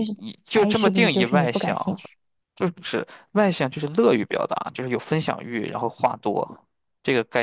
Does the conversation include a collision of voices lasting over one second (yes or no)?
yes